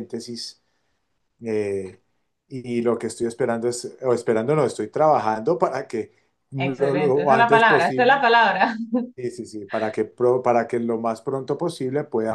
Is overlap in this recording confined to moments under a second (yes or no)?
no